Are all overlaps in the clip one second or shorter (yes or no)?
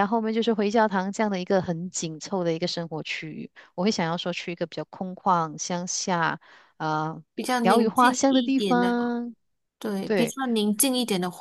no